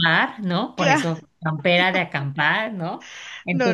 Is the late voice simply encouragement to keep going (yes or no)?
no